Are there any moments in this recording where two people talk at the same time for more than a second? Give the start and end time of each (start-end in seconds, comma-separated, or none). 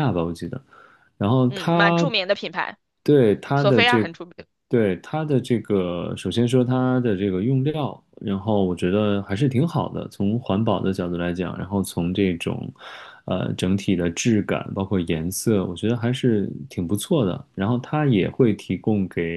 none